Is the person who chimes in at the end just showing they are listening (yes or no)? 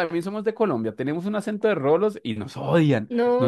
no